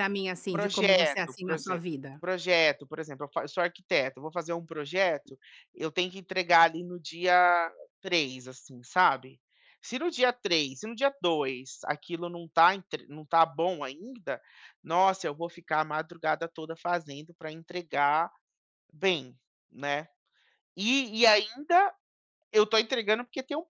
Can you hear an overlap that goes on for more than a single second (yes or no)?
yes